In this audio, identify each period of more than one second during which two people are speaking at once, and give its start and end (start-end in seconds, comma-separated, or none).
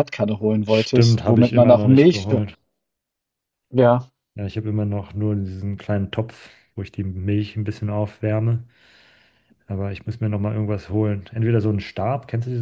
0.7-2.3